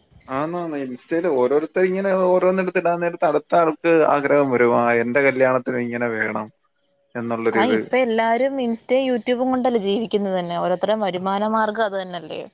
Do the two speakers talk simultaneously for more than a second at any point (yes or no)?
no